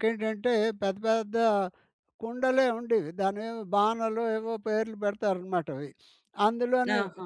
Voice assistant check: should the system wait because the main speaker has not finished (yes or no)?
yes